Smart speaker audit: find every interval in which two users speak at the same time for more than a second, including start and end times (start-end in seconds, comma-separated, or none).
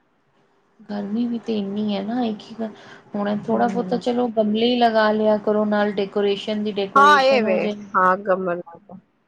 none